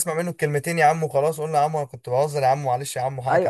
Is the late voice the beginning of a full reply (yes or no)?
yes